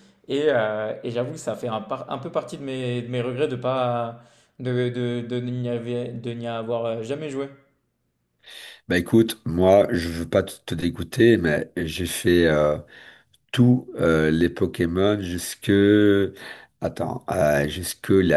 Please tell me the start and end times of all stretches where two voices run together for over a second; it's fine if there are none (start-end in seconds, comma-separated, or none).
none